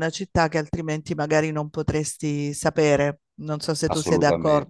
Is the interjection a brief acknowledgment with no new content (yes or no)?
no